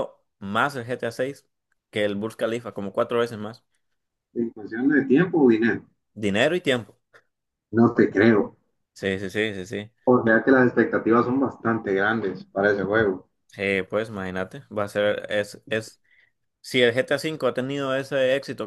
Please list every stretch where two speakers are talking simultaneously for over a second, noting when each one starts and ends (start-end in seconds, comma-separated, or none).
none